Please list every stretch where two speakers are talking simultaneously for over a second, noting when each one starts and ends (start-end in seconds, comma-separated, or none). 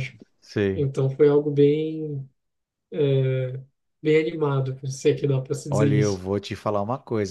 none